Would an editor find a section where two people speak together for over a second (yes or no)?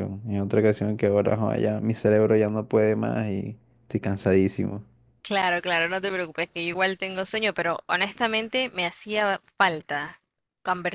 no